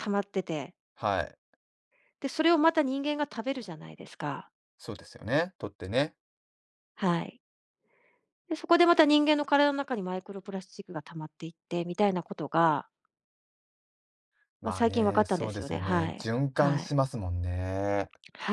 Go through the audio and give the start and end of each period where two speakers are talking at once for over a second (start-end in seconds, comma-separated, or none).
14.6-17.0